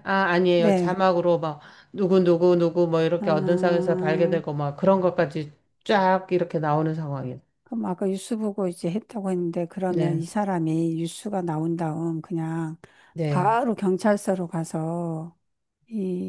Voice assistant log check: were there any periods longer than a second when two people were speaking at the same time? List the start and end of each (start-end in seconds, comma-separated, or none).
3.2-4.4